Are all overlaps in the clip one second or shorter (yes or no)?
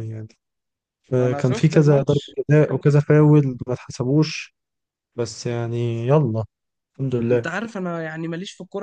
no